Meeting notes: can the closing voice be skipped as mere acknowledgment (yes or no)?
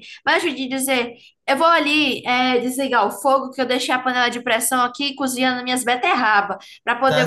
yes